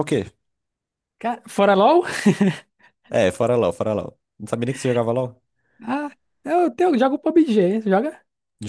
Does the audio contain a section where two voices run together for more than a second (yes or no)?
no